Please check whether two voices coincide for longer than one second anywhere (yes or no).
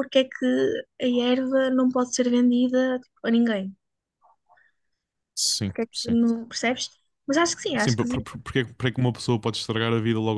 no